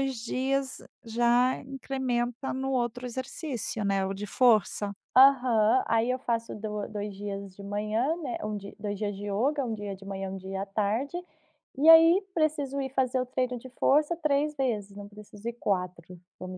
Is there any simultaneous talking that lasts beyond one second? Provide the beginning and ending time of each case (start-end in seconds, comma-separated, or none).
none